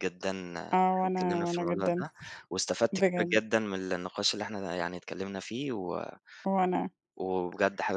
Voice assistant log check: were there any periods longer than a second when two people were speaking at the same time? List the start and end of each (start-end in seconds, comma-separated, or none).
0.7-2.0